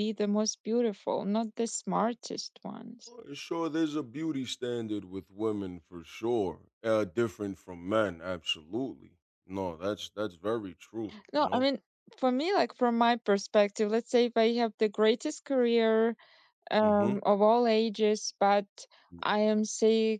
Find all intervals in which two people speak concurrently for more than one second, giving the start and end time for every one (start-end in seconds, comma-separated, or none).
none